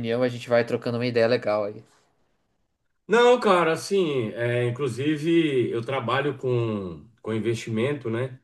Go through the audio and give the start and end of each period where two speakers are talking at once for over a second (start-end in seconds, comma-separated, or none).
none